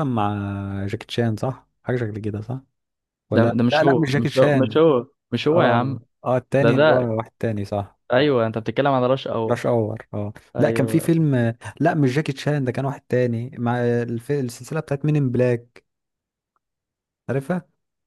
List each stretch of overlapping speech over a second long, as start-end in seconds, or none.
3.3-4.8